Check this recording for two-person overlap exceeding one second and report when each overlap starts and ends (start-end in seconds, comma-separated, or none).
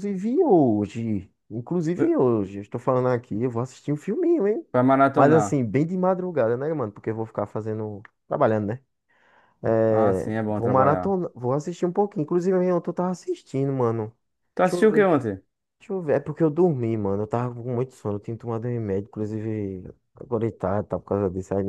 9.9-11.2